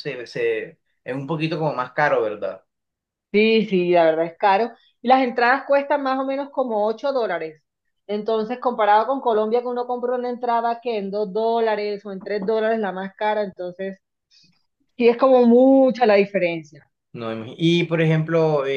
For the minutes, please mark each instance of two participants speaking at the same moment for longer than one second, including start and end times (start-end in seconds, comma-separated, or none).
none